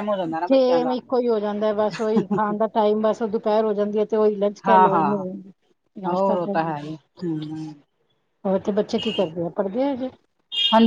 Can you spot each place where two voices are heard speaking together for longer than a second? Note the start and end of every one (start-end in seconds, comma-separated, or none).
none